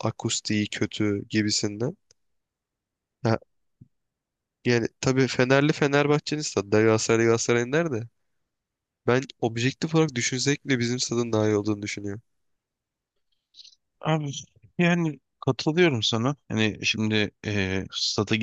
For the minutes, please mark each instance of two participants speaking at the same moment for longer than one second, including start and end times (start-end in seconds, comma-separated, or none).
none